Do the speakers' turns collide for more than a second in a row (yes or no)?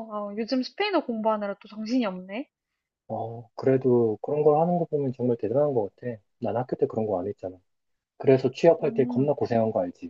no